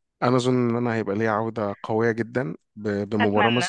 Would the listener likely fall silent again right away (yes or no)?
yes